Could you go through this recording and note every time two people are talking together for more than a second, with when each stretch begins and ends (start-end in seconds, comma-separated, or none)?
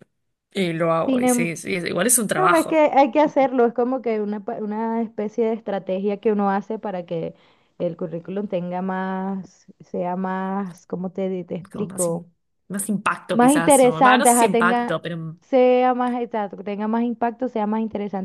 13.3-15.0